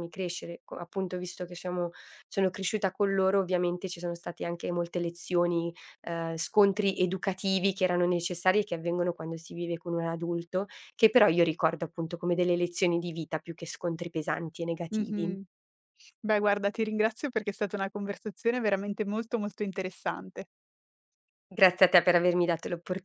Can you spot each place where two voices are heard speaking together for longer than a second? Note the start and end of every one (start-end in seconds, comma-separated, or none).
none